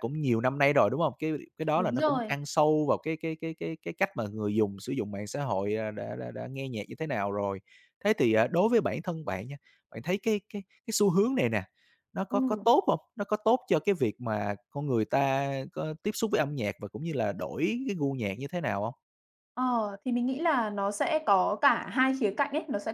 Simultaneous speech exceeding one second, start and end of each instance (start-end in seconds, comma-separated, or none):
none